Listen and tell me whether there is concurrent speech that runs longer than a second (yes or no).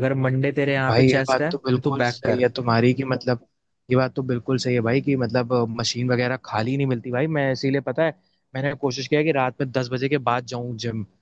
yes